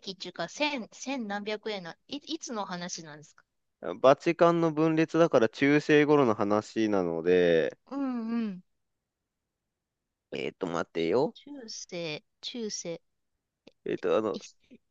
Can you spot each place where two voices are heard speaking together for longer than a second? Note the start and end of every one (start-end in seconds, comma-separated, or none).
none